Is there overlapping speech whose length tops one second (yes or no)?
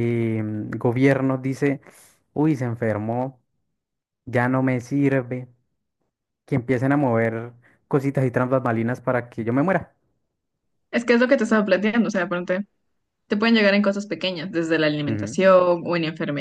no